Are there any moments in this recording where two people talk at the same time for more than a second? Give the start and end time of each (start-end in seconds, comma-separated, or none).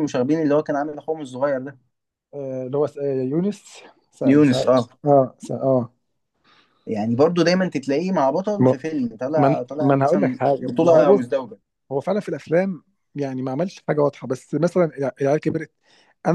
9.4-11.2